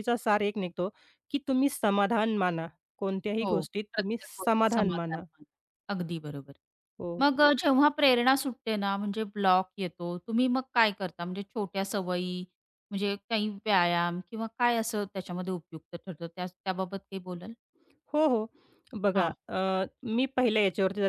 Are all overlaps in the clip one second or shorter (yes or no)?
no